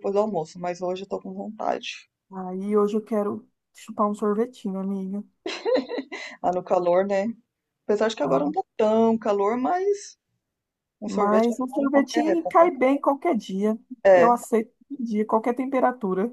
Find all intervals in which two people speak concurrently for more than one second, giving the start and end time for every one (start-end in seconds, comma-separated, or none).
11.0-12.7